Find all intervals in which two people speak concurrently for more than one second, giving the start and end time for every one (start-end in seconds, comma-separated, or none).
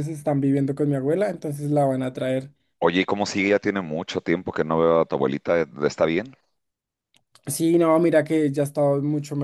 none